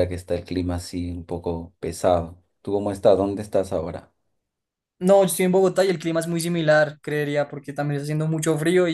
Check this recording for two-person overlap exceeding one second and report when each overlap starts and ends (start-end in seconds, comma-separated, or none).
none